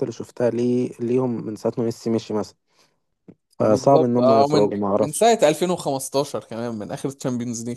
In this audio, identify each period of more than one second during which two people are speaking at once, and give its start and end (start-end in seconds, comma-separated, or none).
3.6-5.3